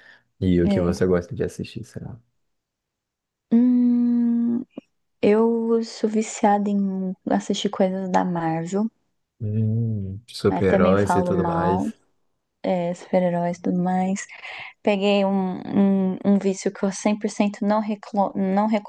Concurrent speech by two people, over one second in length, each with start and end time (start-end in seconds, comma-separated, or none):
10.5-11.8